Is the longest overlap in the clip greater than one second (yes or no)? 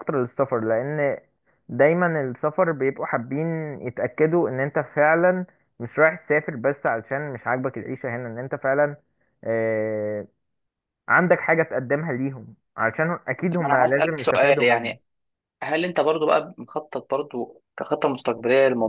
yes